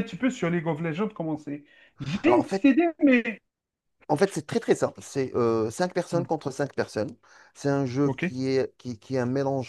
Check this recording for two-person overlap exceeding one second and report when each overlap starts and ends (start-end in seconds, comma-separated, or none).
none